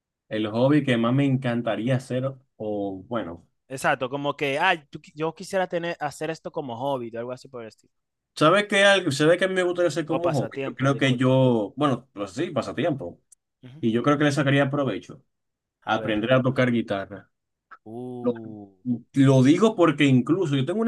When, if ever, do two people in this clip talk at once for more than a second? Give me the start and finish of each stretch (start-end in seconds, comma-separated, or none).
10.1-11.3